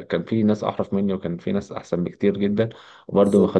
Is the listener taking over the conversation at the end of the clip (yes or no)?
no